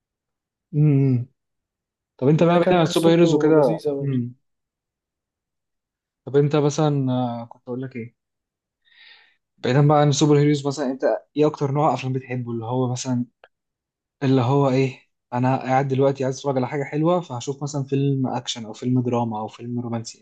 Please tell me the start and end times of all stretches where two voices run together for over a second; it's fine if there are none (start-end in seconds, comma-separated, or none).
2.5-4.2